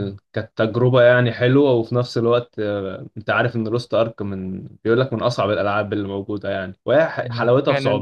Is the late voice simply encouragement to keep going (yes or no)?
no